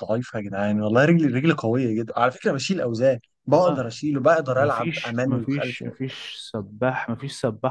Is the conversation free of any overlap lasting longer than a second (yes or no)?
no